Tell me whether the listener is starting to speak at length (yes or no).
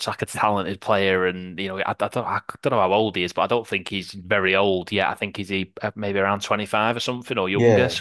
no